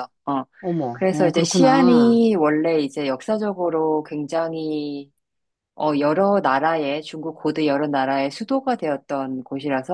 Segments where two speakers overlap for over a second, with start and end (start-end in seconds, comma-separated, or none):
0.9-2.2